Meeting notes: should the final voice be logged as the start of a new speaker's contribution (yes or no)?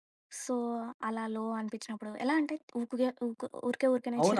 yes